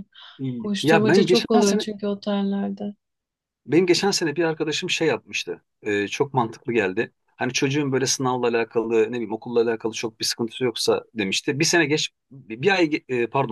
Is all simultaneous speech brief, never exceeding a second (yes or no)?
no